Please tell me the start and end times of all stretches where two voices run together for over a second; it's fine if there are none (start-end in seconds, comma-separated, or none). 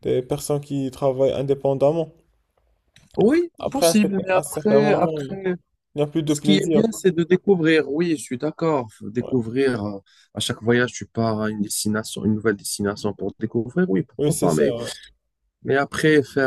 3.6-5.4